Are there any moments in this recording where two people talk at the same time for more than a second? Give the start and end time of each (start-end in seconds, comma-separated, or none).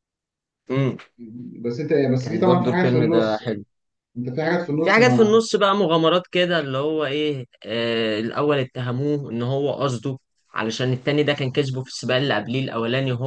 2.2-3.4